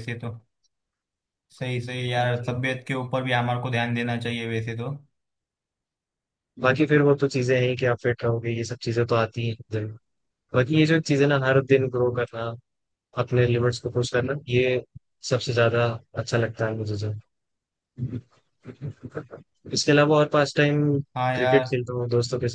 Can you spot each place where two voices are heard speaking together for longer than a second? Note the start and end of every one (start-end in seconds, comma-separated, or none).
none